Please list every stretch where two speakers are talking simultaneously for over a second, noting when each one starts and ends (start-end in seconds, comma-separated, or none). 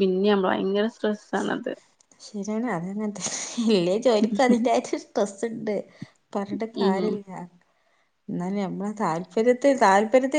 none